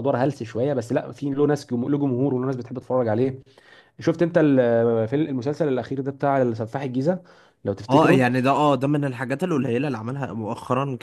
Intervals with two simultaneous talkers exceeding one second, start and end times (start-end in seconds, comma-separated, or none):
none